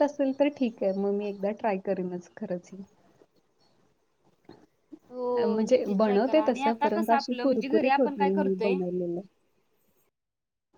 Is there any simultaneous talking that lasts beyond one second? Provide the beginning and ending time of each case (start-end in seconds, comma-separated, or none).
5.5-8.7